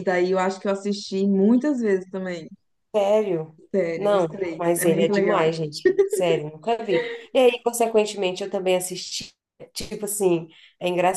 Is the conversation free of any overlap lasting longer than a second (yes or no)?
no